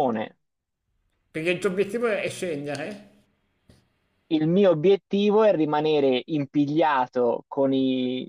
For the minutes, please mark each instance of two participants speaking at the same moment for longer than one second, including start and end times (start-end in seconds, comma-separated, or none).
none